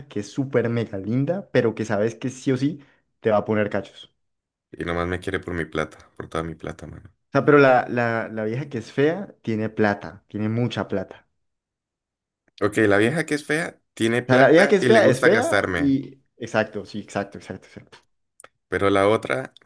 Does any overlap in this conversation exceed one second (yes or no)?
yes